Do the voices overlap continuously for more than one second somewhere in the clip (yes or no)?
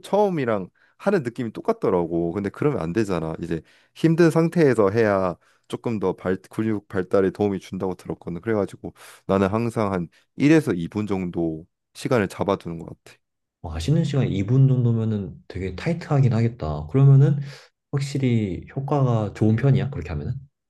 no